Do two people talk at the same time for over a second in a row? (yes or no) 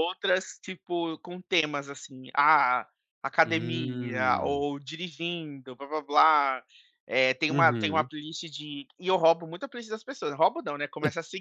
yes